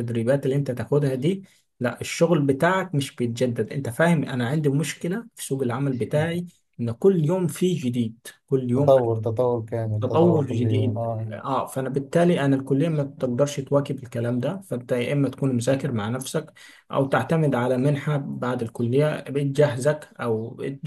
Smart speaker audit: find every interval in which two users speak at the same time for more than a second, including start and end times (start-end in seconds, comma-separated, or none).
10.0-11.3